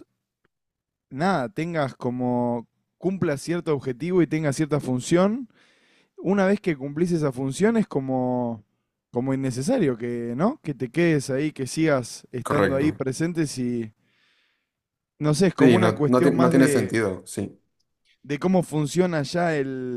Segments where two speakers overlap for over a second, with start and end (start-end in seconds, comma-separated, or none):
15.6-17.0